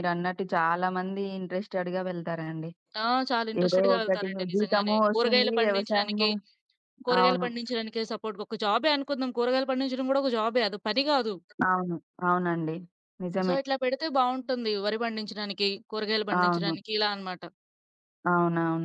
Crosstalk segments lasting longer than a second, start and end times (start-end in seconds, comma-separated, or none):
3.6-6.3